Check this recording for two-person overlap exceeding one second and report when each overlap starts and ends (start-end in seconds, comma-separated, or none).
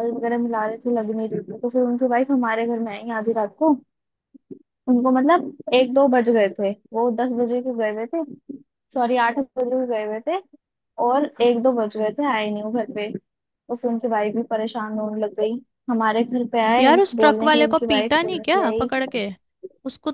16.8-18.9